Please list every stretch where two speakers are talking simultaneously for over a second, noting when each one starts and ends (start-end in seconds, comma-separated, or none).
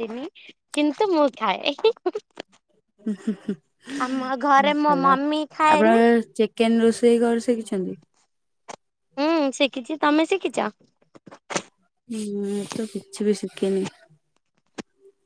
4.4-6.0